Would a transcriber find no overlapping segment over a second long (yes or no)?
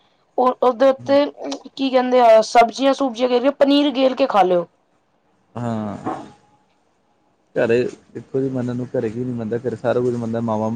yes